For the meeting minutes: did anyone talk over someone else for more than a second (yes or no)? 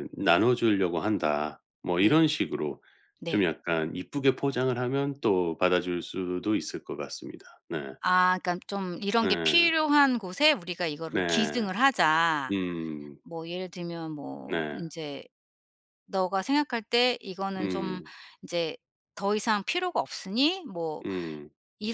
no